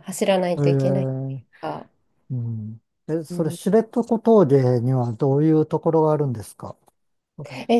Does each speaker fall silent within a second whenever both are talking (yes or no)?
yes